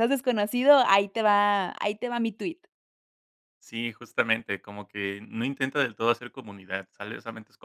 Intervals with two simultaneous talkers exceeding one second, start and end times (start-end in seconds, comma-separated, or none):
none